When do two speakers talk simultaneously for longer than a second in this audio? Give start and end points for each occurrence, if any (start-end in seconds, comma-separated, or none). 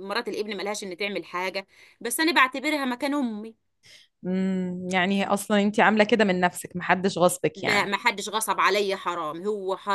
none